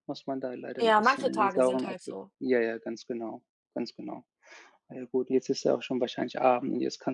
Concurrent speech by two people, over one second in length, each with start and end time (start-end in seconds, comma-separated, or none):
0.8-2.3